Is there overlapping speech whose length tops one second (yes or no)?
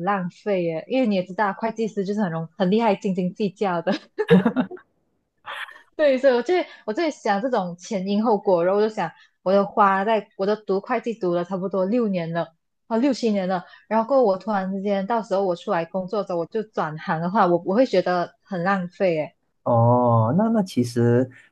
no